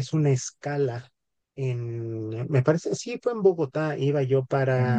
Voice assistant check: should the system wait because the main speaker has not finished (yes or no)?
yes